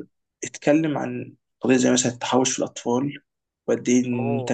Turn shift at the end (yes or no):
no